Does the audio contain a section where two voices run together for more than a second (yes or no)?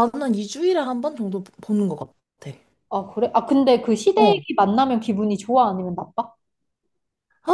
no